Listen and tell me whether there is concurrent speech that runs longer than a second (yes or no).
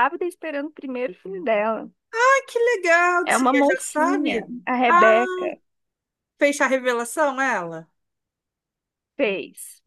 yes